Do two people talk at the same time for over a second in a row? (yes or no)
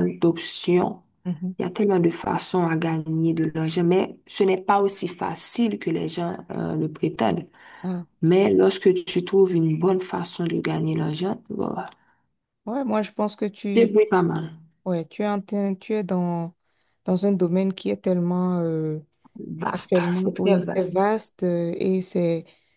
yes